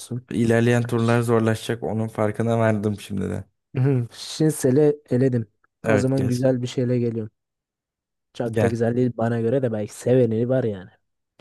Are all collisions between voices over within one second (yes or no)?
yes